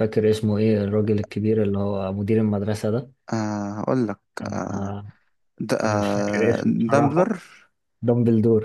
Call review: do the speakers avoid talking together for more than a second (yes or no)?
no